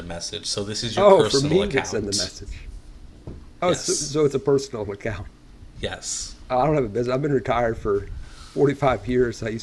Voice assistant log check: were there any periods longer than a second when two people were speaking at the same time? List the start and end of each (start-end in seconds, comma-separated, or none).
1.0-2.3